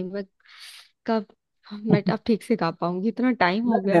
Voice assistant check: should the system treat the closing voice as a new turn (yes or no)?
yes